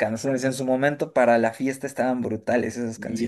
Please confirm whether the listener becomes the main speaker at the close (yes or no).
yes